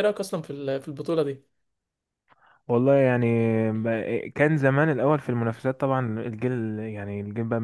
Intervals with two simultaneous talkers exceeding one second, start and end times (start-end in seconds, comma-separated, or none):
none